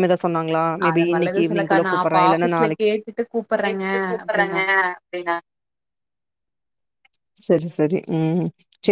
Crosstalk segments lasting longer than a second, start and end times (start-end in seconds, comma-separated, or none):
0.9-2.9